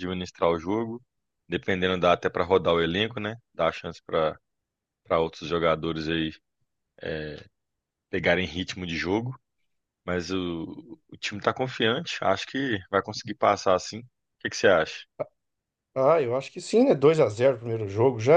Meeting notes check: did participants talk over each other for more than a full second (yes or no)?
no